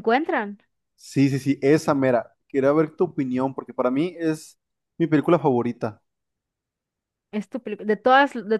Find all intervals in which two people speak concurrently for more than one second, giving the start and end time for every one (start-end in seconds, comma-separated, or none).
none